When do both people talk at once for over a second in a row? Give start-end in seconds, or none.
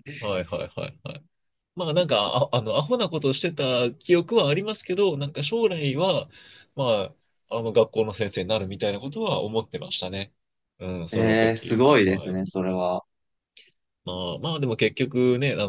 11.1-12.4